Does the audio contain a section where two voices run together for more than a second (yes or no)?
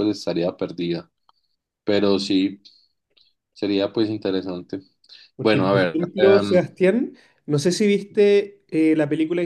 yes